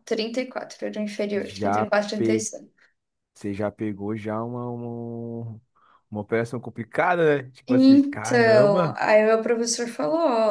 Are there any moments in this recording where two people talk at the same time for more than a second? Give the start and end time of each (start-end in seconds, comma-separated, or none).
7.7-8.9